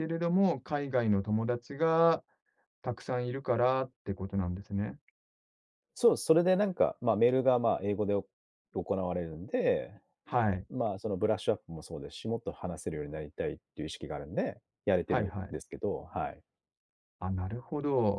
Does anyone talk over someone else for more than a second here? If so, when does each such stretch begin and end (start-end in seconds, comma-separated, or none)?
none